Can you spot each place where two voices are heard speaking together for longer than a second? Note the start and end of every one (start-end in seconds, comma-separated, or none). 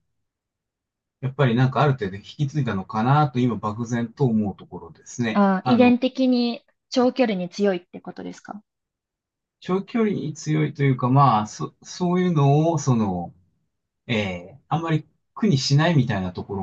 none